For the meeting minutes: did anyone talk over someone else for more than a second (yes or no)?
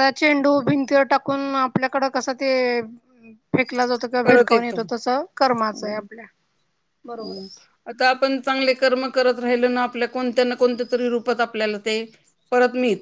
no